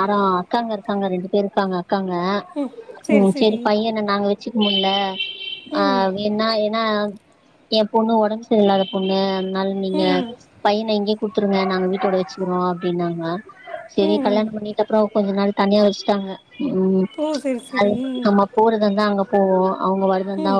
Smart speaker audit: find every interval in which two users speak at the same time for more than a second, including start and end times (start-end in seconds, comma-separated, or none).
none